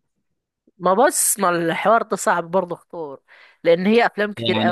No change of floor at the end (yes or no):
no